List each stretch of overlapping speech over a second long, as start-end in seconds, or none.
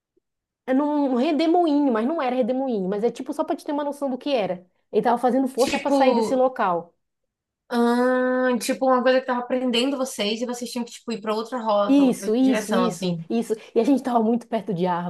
11.9-13.2